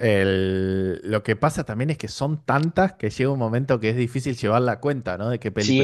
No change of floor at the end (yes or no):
no